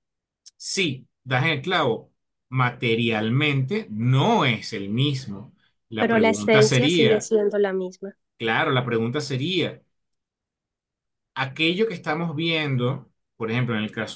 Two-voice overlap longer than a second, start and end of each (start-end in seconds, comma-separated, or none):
6.0-7.3